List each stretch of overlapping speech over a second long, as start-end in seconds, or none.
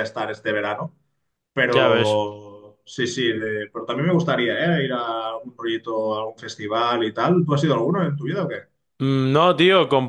none